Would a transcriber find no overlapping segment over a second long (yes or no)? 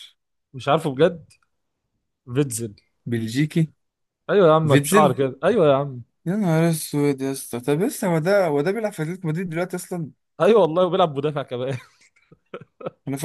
yes